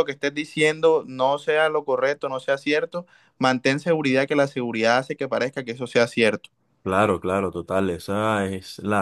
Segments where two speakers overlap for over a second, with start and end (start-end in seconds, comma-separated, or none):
none